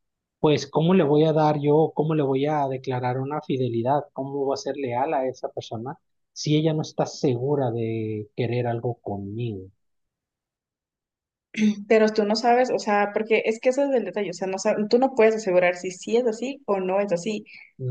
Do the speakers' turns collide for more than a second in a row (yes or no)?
no